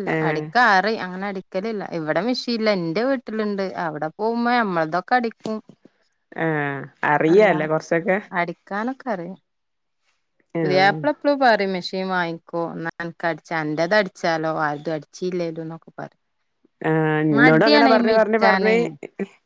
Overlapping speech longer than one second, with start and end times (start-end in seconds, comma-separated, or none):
17.4-18.8